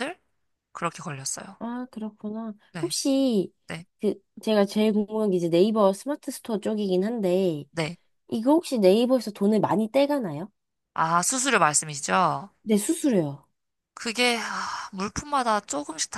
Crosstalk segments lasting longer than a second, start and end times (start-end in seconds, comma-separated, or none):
none